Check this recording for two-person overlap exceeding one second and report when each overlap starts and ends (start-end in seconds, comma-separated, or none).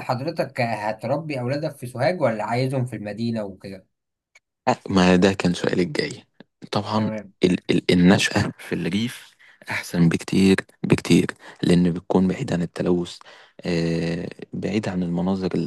none